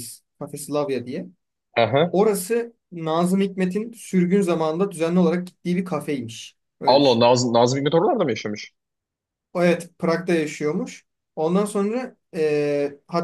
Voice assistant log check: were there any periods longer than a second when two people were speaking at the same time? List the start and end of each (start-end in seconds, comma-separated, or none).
none